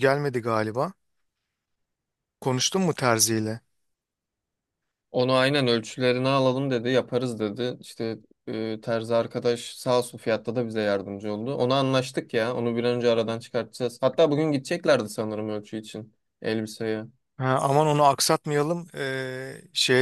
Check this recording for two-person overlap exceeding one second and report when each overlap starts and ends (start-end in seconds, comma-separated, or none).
none